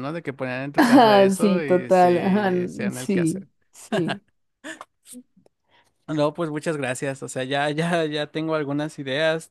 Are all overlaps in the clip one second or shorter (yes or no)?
no